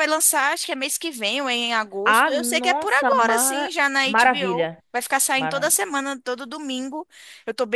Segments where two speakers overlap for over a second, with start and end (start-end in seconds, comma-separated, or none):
2.0-4.8